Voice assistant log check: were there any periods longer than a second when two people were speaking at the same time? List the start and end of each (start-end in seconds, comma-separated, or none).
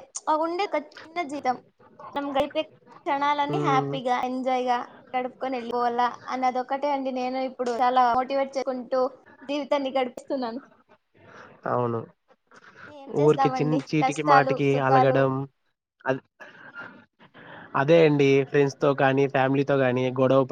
13.2-15.2